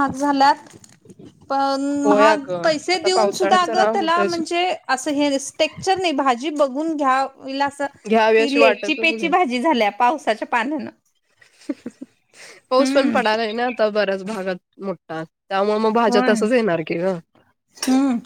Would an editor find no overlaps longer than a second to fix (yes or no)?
no